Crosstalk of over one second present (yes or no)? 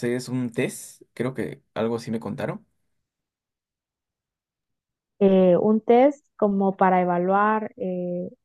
no